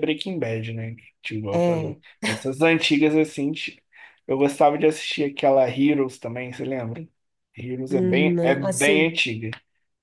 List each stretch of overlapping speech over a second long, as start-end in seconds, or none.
7.9-9.1